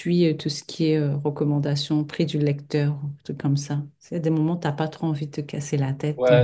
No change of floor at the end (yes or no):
no